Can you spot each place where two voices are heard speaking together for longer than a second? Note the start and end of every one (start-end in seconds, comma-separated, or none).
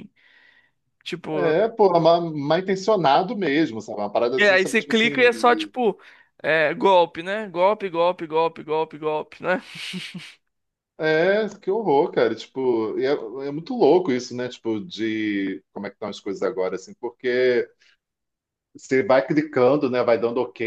4.4-5.7